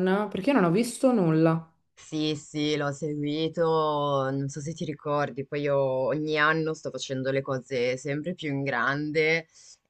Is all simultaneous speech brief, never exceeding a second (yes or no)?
yes